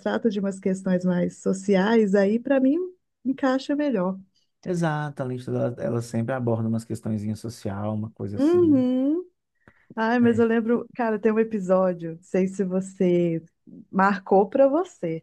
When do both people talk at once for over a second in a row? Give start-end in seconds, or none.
none